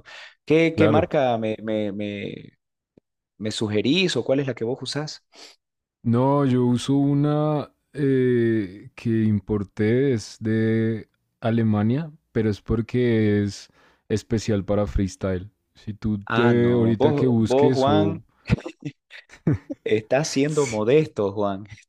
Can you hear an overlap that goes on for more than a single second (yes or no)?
yes